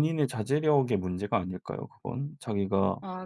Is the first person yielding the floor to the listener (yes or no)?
no